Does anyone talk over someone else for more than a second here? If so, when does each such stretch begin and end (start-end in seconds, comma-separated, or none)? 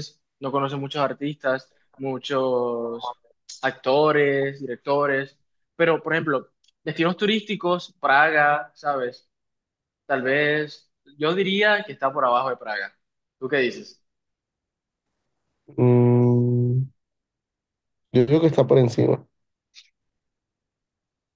none